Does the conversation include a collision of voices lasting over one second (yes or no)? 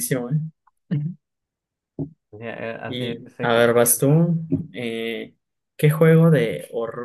yes